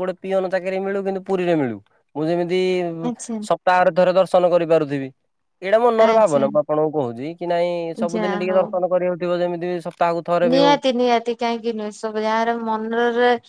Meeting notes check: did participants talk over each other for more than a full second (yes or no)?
no